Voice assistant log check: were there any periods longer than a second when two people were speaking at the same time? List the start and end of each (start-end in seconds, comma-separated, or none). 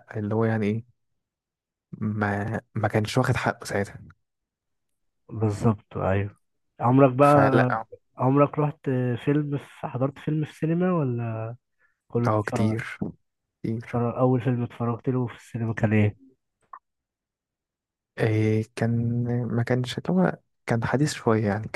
none